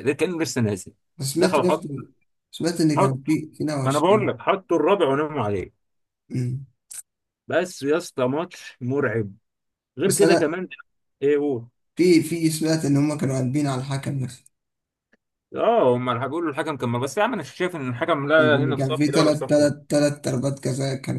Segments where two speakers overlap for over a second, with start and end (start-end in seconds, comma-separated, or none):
18.4-19.7